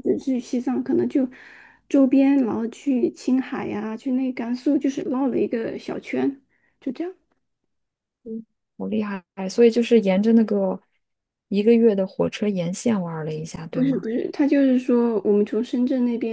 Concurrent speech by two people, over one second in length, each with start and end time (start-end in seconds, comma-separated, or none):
none